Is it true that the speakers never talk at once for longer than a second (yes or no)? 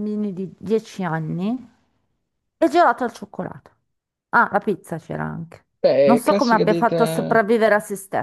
no